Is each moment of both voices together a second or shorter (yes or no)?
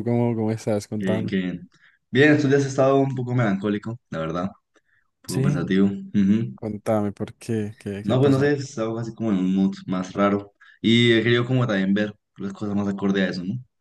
yes